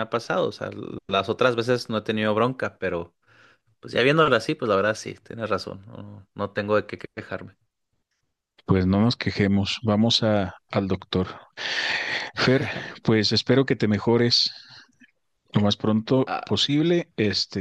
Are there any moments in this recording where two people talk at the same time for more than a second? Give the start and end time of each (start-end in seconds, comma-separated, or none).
none